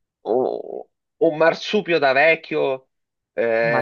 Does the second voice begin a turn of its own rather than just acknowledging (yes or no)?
no